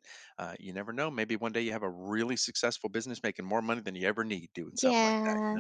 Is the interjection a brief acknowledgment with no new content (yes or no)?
no